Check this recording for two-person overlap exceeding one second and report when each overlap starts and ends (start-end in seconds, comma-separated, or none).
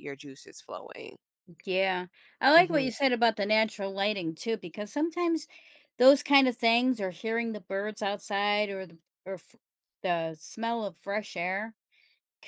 none